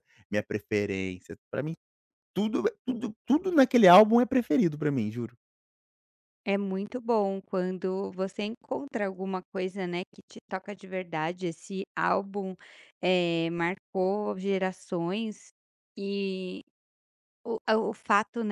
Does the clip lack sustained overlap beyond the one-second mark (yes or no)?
yes